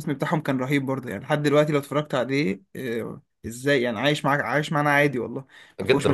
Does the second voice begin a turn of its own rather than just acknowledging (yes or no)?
yes